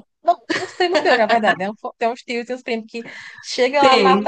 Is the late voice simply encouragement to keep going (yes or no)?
yes